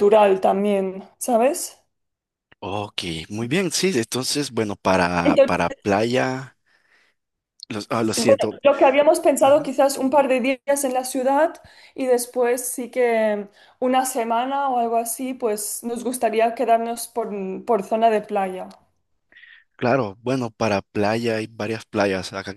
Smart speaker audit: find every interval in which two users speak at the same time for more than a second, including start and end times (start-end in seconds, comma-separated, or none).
none